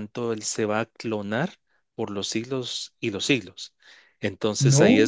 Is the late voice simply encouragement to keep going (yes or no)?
yes